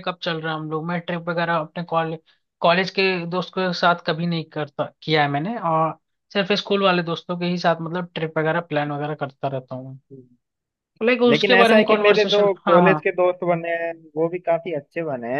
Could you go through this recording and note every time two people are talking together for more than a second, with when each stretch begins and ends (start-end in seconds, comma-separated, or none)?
11.3-13.0